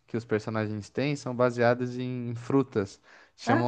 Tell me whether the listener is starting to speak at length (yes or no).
no